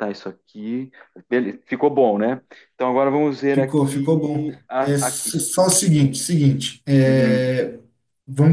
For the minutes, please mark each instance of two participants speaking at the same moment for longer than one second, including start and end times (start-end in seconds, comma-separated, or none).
3.5-5.4